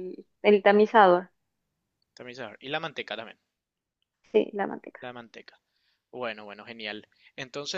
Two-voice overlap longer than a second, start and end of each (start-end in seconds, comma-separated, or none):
none